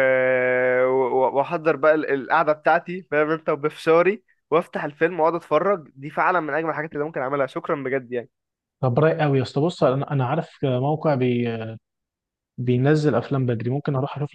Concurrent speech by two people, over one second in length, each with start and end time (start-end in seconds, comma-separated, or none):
none